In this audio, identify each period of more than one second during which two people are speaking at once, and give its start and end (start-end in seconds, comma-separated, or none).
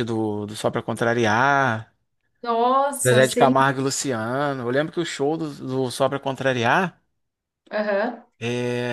none